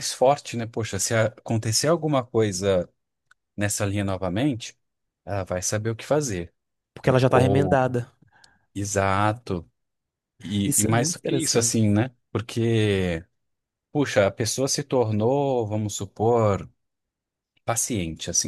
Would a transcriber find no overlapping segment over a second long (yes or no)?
no